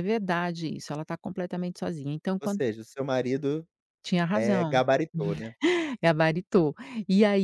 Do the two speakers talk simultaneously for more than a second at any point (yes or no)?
no